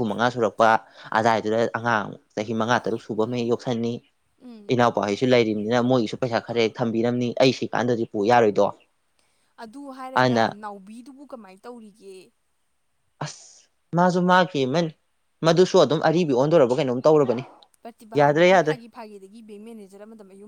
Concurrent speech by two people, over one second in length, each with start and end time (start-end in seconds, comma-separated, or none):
none